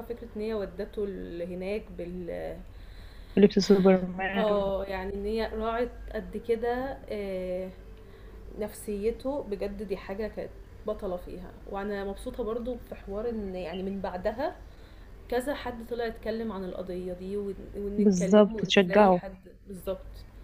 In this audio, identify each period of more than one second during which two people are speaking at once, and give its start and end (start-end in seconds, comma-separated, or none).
18.0-19.2